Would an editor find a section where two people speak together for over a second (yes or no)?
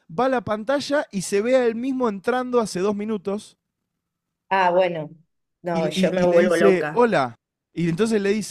yes